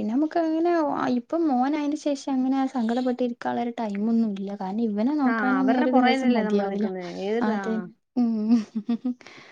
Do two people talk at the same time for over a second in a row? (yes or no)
yes